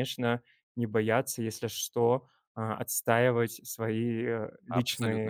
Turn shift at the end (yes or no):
yes